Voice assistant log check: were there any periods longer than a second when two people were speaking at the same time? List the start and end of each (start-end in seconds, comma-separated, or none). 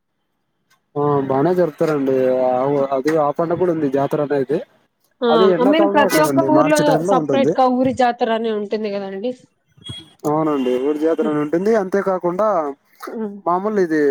5.3-7.5